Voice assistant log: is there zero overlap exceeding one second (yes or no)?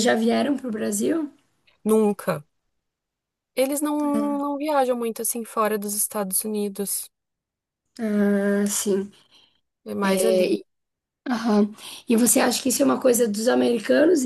yes